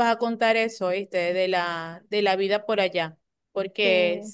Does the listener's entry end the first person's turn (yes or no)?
no